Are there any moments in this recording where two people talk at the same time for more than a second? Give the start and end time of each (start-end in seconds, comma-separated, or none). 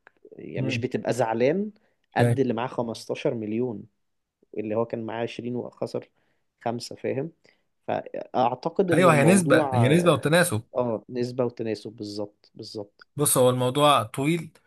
8.9-10.2